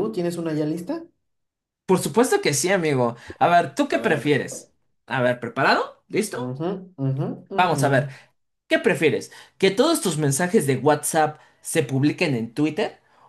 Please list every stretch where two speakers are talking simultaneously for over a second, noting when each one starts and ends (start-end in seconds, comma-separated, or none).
none